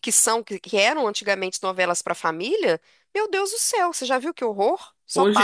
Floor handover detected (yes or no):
yes